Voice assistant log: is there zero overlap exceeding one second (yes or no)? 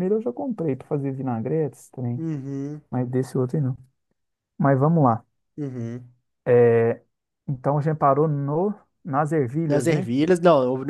yes